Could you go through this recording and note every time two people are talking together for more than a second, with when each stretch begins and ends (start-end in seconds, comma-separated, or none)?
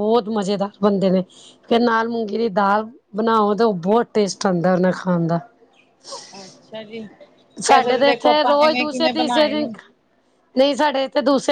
7.7-9.7